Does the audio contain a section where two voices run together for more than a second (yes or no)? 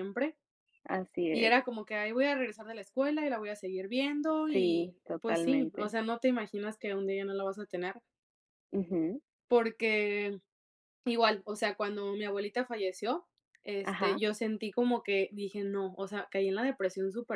yes